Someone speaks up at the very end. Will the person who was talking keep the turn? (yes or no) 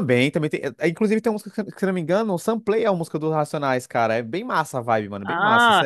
no